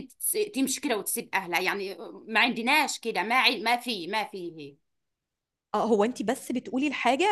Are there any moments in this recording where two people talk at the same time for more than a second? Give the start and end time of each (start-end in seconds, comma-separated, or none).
none